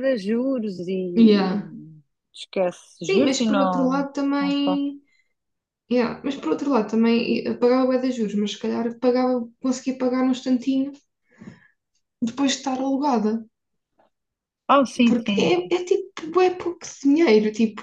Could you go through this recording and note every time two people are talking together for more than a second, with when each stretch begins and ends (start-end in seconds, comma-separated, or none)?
3.0-4.8